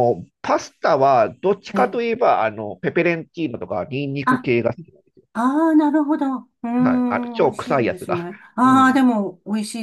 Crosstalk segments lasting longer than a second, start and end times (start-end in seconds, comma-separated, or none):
6.8-9.0